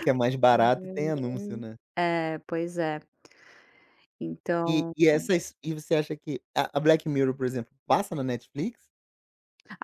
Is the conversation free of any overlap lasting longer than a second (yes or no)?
no